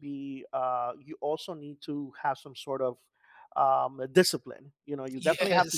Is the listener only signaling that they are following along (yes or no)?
yes